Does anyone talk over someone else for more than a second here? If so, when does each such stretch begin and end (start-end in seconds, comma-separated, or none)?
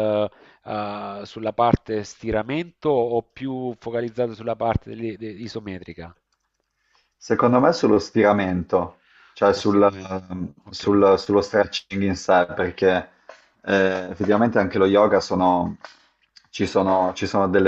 none